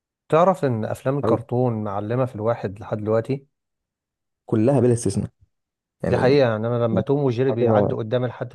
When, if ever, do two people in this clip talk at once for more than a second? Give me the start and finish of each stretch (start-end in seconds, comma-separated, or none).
none